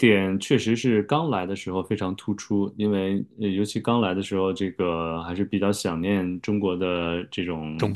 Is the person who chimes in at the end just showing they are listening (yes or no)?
yes